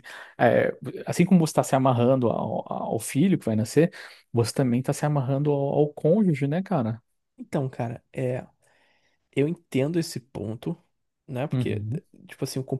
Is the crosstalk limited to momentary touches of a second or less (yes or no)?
yes